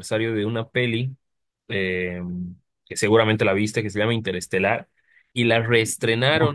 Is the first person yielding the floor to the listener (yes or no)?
no